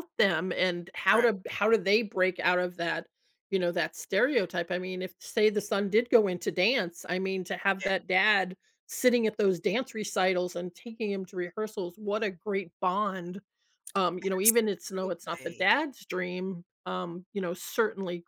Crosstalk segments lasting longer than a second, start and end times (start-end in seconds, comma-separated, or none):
14.4-15.7